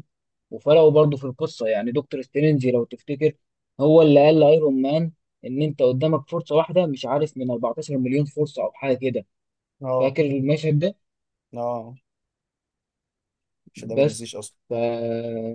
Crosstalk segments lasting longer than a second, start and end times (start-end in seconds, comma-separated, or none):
none